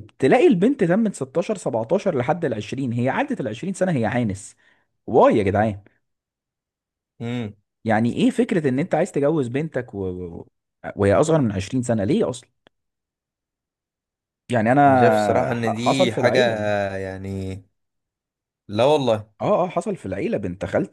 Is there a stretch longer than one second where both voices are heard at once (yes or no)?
yes